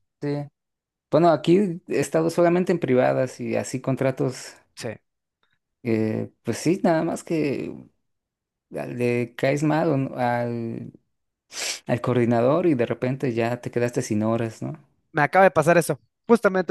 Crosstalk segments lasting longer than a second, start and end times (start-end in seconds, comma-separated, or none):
none